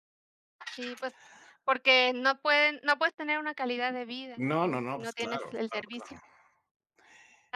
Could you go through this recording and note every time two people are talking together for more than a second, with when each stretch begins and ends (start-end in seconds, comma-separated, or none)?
4.3-6.2